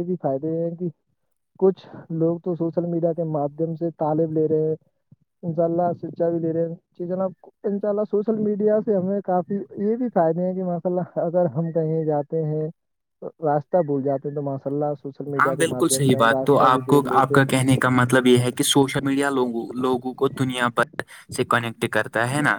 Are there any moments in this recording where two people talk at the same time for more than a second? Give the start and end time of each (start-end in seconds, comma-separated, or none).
15.4-17.4